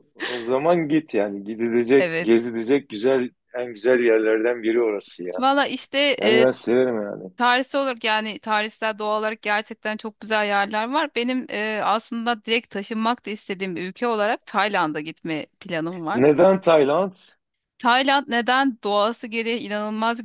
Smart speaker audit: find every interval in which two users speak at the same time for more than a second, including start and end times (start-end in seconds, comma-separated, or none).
none